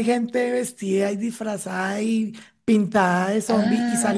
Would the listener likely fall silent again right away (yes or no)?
yes